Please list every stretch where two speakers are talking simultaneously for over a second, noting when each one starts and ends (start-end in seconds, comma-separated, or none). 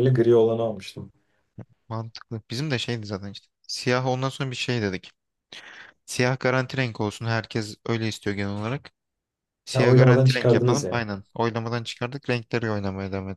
9.7-11.0